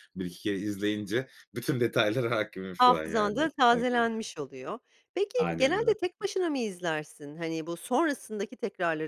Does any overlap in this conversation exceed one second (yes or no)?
yes